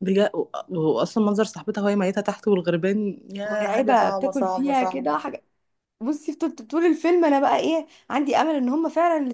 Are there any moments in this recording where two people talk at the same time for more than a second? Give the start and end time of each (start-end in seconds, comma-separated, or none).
3.5-5.2